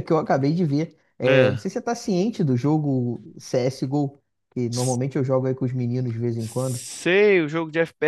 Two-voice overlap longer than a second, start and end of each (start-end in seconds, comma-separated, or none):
none